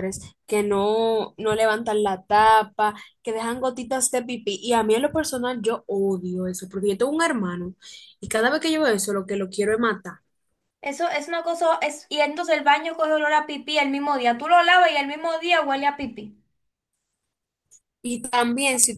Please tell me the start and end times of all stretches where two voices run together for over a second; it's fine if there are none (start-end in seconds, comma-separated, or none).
none